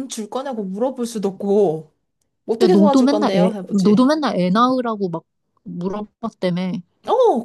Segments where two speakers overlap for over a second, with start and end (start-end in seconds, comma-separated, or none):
2.6-4.0